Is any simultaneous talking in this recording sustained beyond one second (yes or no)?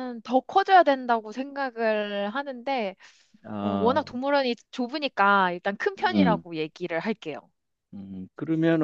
no